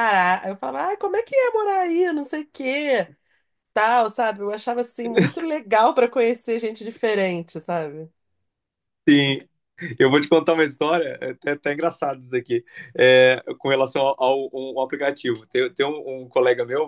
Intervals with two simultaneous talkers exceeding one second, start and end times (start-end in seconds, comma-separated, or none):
none